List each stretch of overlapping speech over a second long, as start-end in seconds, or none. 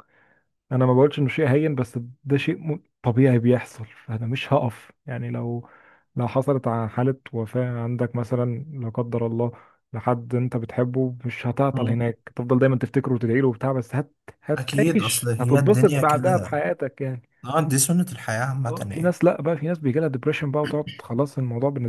14.6-16.6